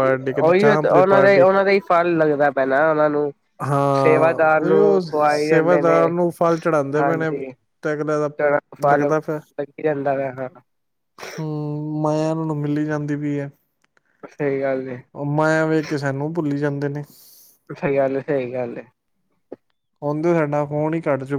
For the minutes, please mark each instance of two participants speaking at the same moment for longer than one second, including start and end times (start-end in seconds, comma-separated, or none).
4.0-6.0